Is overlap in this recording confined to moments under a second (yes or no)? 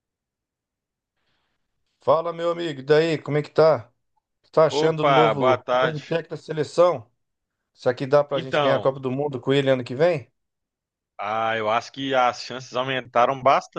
no